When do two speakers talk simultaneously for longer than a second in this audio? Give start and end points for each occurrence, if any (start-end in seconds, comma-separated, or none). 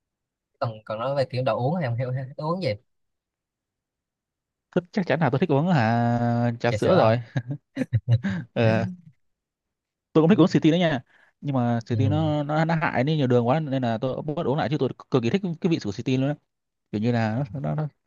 none